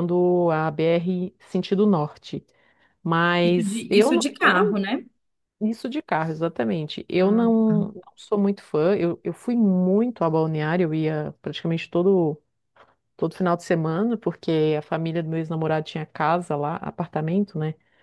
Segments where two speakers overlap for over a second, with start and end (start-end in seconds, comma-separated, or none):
3.4-4.8